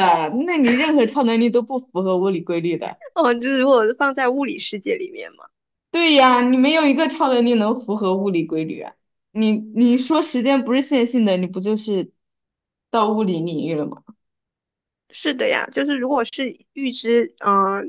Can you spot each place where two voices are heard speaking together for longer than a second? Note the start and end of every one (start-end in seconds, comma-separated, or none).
none